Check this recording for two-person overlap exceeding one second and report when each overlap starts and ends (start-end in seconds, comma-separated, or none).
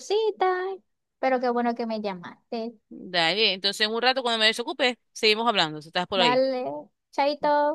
none